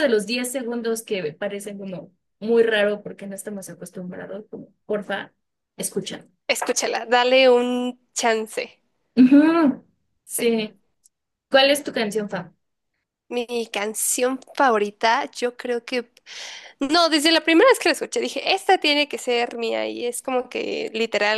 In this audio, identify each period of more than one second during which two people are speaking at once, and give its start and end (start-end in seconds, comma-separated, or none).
none